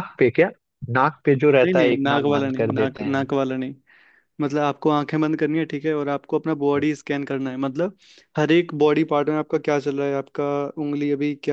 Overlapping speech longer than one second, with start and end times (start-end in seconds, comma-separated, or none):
1.6-3.2